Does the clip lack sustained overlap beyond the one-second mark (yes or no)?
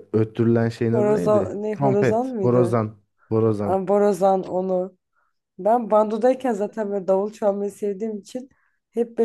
no